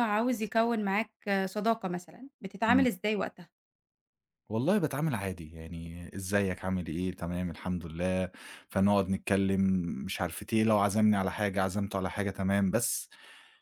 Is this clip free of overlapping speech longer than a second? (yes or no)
yes